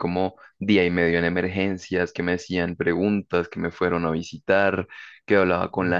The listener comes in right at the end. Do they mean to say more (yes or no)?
no